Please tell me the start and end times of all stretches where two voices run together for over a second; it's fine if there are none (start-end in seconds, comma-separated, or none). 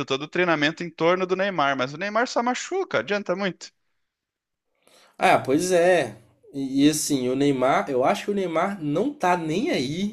none